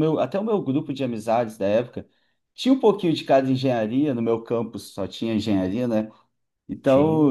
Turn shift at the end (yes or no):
no